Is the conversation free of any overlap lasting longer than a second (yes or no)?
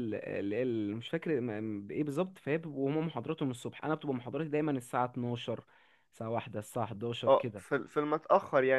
yes